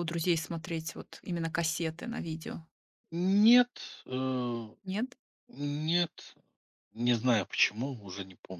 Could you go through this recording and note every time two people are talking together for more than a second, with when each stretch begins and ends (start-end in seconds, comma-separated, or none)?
none